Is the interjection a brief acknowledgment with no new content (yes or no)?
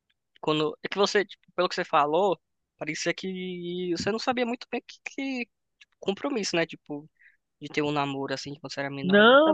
no